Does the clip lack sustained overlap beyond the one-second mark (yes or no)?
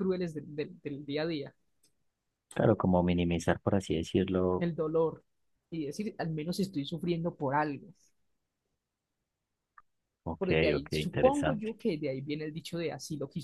no